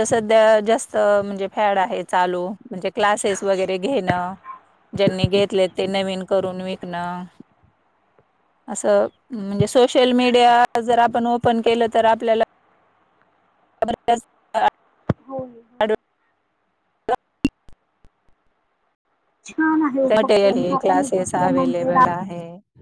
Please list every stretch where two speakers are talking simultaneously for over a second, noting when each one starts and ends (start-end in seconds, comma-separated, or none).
20.1-21.9